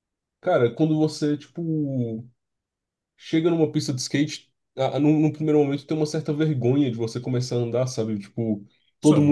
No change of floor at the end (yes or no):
yes